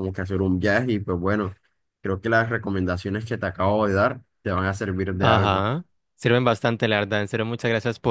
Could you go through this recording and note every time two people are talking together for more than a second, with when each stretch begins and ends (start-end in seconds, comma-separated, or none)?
none